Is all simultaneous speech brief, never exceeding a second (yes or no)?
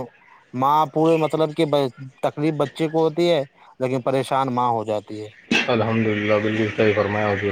yes